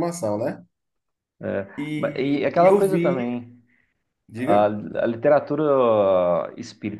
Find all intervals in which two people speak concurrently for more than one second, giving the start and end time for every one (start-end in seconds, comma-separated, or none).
1.8-3.3